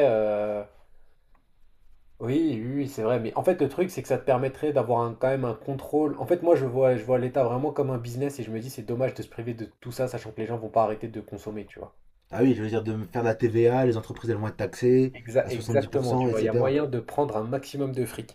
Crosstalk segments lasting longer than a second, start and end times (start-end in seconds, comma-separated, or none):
15.1-16.8